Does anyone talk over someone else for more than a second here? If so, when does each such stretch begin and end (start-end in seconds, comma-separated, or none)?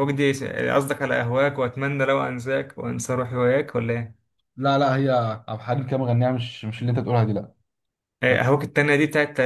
none